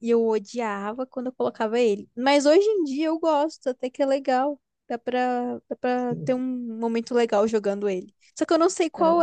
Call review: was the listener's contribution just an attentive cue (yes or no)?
yes